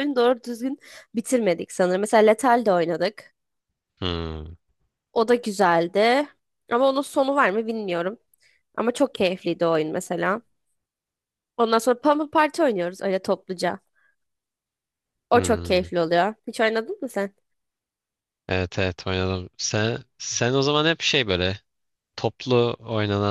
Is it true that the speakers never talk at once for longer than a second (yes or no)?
yes